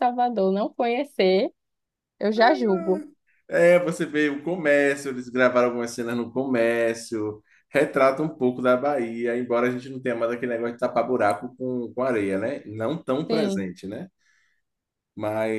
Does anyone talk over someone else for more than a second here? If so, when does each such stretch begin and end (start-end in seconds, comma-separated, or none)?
none